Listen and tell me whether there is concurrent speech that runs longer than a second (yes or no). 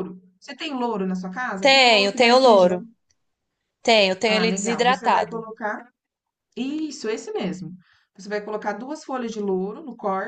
yes